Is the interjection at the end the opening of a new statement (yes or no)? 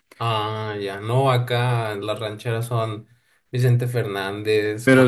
yes